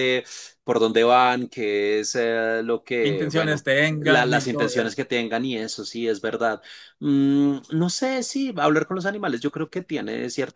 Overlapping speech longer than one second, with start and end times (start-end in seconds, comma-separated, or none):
3.0-5.0